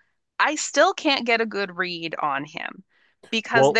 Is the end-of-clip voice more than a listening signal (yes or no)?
no